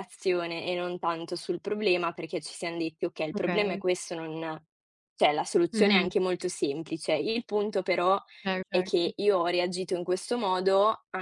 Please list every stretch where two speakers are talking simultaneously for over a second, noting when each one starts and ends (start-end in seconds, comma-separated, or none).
none